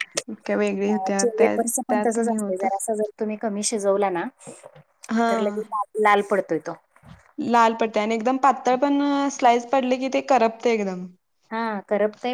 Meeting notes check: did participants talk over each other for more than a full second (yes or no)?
yes